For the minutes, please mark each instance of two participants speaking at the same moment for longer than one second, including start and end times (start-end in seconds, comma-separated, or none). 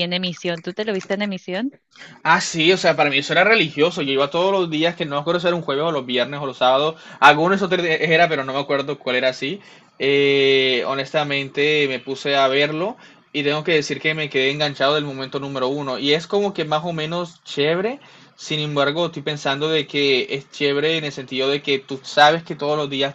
none